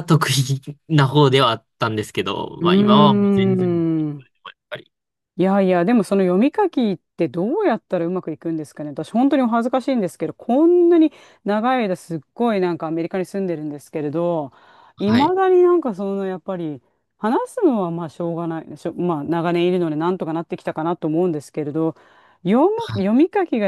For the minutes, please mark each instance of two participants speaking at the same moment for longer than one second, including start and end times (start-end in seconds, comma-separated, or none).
2.6-3.8